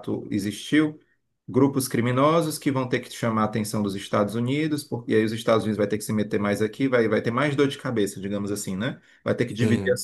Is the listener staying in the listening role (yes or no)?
yes